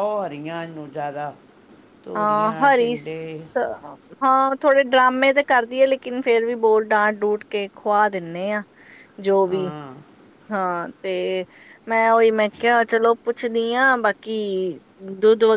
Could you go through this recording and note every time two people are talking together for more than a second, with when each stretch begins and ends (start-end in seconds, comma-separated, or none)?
2.1-3.5